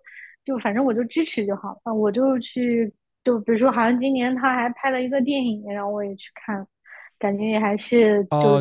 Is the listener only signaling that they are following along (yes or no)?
no